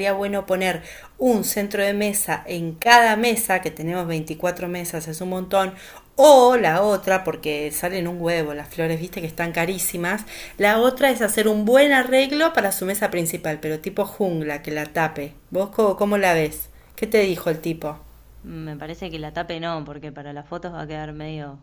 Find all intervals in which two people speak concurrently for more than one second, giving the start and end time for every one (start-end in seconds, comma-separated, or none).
none